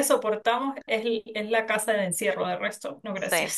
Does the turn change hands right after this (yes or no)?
yes